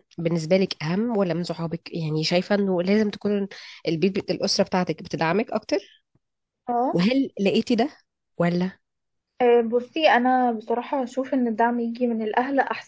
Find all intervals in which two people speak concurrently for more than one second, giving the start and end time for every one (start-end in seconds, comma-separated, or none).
none